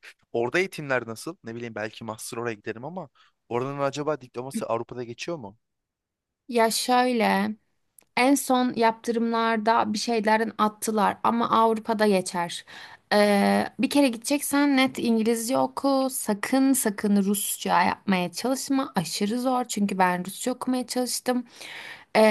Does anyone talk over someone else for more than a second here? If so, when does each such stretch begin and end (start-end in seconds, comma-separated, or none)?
none